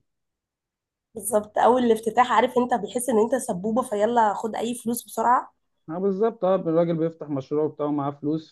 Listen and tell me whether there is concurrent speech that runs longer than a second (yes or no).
no